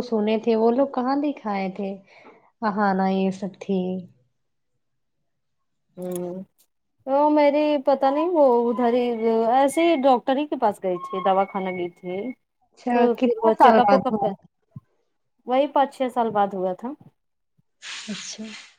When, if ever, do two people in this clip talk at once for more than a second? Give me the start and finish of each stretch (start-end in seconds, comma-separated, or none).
12.6-14.3